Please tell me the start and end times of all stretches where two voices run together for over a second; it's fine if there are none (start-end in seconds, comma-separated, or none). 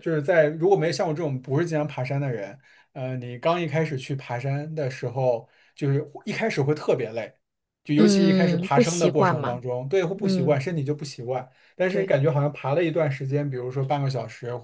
8.0-9.6